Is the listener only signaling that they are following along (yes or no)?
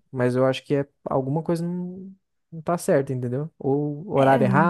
yes